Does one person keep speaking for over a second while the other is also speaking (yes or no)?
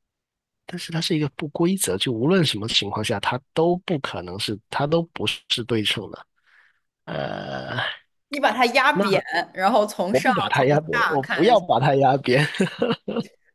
yes